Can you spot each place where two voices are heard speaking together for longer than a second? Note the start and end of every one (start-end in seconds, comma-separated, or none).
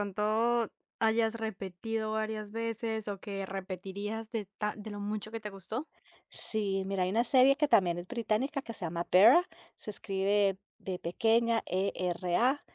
none